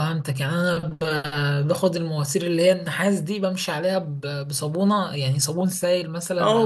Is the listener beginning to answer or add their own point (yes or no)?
yes